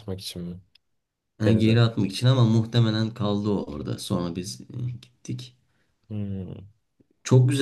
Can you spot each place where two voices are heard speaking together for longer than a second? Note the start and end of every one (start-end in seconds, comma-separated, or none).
none